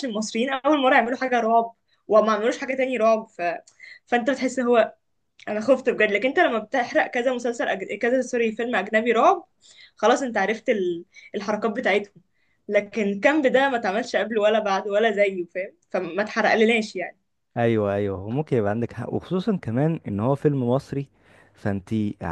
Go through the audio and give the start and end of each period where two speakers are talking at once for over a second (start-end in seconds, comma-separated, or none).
none